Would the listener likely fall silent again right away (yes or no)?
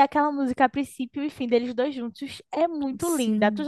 no